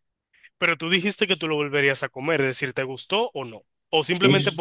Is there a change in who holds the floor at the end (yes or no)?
yes